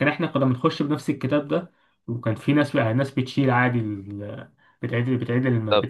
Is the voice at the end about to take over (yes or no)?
no